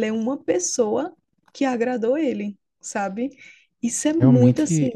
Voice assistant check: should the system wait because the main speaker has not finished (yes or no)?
no